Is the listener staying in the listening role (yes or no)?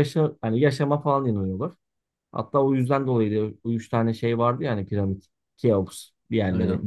yes